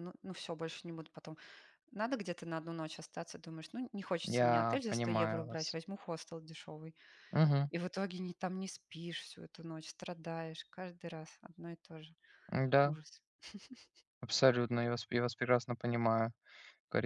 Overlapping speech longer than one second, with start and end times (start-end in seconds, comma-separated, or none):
4.3-5.8